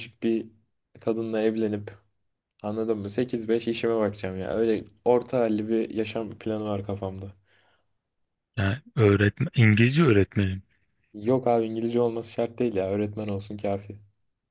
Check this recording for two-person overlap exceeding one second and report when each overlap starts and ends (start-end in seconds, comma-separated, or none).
none